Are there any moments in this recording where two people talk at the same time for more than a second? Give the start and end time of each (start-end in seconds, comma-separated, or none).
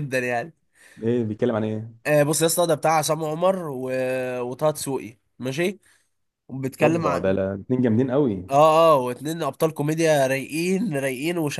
none